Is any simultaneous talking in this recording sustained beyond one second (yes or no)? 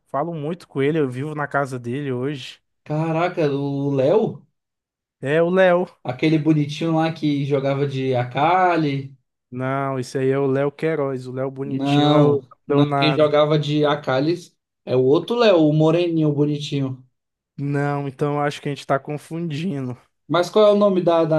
yes